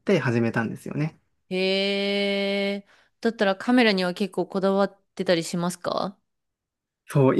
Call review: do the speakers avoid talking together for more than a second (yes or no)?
yes